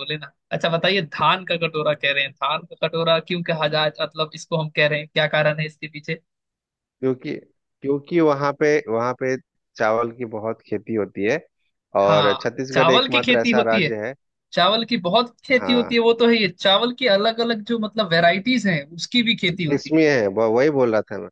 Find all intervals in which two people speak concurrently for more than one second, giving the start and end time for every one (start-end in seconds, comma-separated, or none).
12.0-13.9